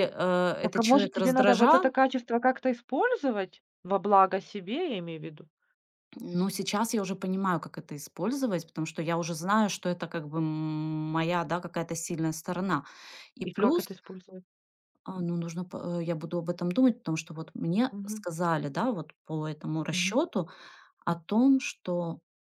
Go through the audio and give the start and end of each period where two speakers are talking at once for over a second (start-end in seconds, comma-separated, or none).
0.6-1.9